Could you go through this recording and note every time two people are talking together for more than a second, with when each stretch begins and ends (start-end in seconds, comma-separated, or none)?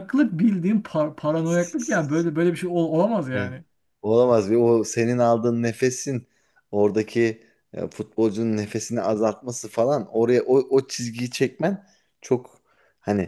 none